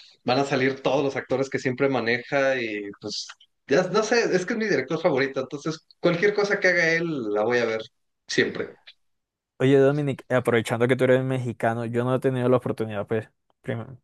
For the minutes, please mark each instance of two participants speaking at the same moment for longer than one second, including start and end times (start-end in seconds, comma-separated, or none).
none